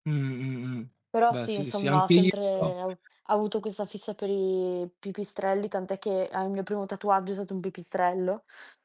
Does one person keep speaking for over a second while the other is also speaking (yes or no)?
yes